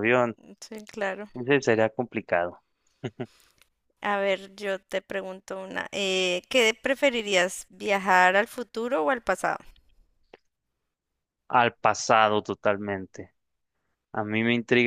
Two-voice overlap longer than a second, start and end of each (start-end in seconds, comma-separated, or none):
none